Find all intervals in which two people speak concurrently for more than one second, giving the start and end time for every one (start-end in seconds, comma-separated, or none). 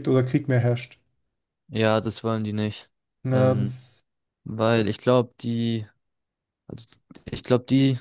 none